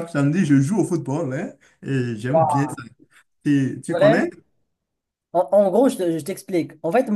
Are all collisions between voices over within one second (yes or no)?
yes